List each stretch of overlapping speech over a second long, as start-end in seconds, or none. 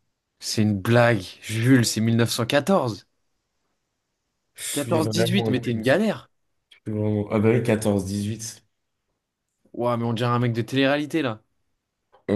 4.7-6.0